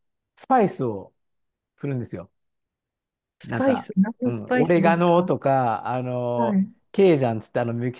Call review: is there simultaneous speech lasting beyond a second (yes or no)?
yes